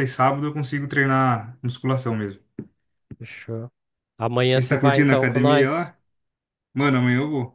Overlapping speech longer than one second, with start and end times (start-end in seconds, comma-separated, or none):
4.5-5.9